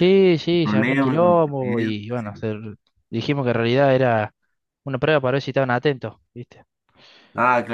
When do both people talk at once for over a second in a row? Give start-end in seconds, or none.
0.5-2.4